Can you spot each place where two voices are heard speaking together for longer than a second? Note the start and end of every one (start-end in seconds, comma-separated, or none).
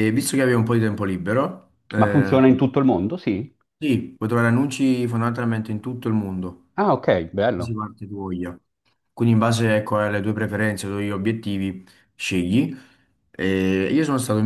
none